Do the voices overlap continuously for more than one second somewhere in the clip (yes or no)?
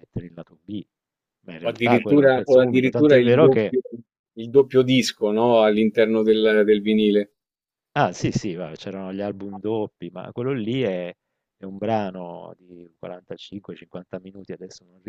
yes